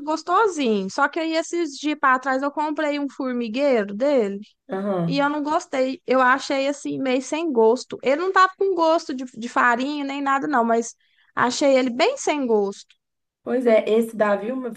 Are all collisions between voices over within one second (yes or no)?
yes